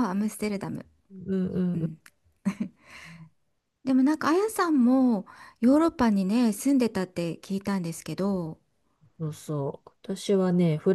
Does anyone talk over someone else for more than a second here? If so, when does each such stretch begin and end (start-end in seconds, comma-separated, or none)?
none